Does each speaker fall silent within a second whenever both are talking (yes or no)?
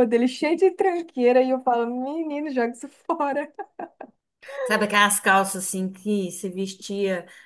yes